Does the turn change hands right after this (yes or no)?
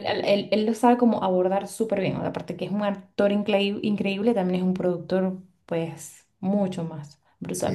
yes